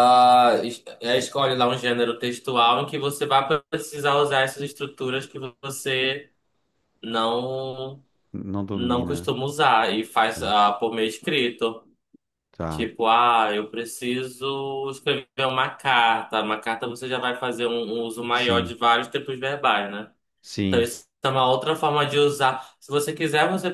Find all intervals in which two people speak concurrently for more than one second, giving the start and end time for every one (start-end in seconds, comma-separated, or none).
none